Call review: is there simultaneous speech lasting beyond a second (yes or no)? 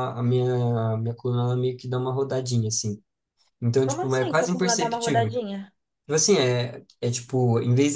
yes